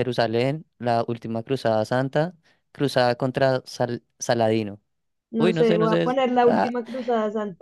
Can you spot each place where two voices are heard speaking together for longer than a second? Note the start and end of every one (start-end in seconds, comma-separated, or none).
5.4-6.7